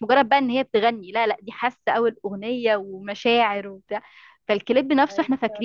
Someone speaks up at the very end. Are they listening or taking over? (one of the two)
listening